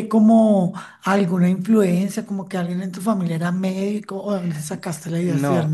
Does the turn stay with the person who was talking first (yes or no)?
no